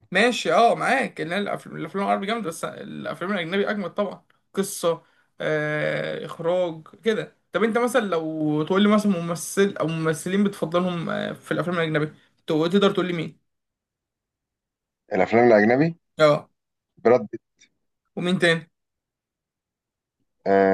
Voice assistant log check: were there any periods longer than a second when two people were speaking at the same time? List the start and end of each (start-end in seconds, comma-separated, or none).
none